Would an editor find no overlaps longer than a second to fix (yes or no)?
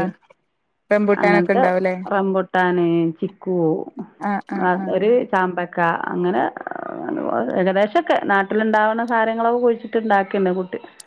yes